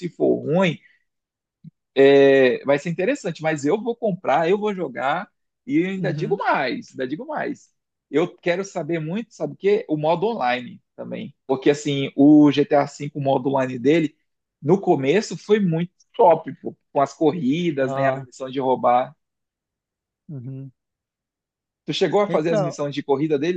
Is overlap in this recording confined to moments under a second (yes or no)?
yes